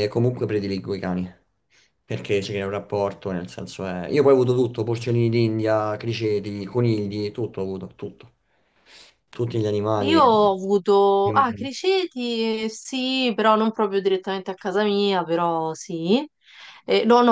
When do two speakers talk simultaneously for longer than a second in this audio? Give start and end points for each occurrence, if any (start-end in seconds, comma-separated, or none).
none